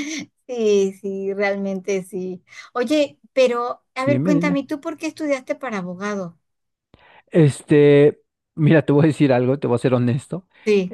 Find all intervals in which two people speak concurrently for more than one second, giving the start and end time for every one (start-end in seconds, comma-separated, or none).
none